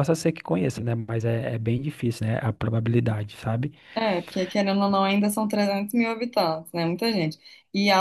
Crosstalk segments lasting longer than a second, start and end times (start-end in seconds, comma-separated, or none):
none